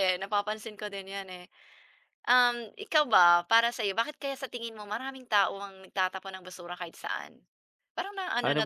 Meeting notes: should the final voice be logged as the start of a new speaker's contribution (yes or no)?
yes